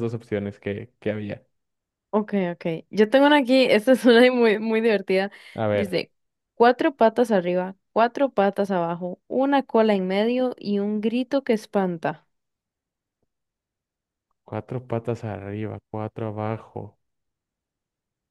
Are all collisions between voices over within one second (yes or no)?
yes